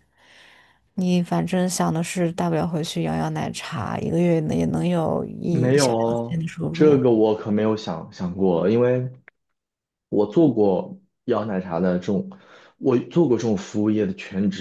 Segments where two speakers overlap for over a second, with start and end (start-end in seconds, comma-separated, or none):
5.5-7.0